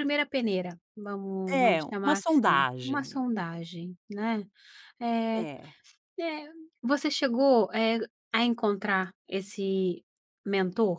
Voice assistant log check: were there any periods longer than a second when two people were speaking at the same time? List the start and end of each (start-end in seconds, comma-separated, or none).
1.5-3.2